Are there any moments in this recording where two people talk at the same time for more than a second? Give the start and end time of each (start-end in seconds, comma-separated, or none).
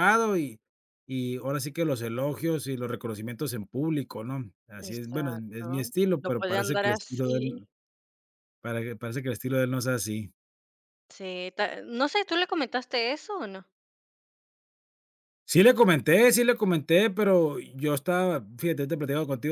4.8-7.6